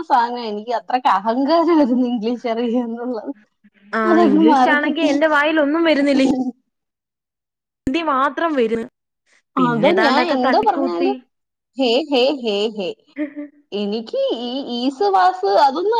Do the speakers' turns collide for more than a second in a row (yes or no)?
no